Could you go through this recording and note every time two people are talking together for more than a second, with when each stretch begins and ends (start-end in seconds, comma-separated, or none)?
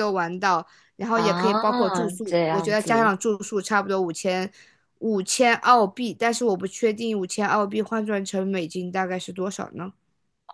1.1-3.2